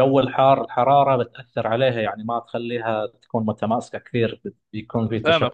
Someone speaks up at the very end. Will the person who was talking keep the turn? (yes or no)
no